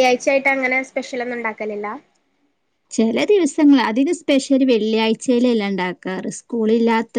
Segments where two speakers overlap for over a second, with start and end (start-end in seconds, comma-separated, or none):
none